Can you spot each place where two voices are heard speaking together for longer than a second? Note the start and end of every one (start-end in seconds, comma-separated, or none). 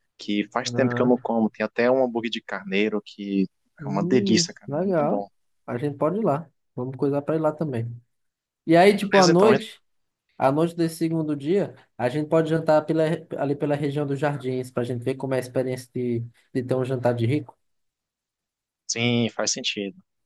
3.8-5.2